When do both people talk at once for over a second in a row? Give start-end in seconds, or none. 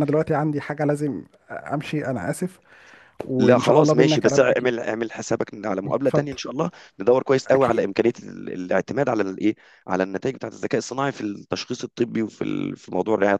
3.4-4.7